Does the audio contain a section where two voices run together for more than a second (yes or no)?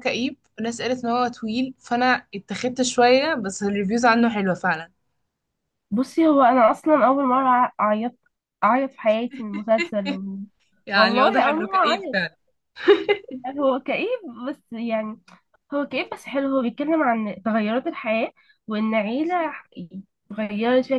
yes